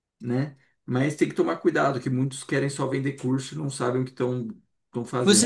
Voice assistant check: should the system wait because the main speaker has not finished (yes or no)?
no